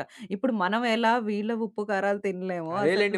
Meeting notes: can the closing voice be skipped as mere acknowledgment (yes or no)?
no